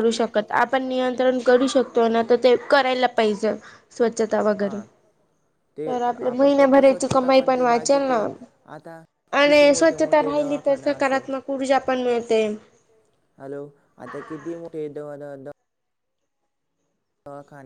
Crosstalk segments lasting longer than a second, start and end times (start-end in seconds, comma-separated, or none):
6.3-8.2, 9.4-11.2